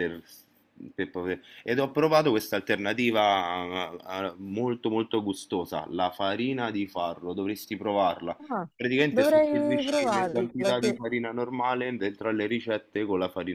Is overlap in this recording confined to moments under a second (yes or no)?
no